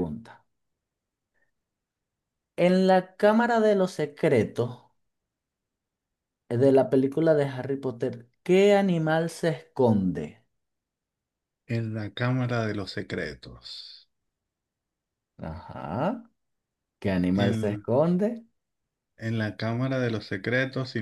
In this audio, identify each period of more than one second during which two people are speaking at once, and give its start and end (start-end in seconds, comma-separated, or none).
none